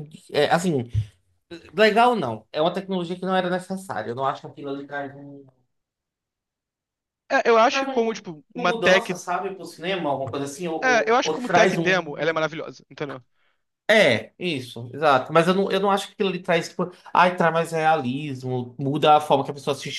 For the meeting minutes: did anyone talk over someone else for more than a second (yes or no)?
yes